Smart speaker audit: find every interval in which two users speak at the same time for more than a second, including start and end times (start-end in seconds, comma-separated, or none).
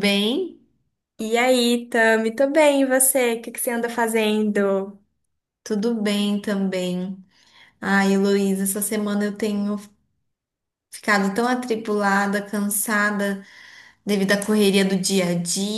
none